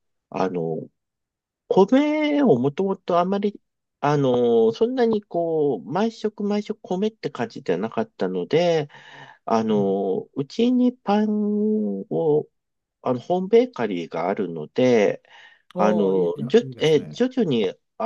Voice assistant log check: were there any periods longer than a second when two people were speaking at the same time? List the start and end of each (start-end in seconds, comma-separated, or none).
15.8-17.2